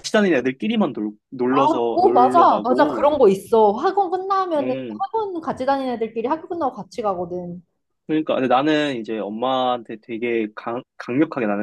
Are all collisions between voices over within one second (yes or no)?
no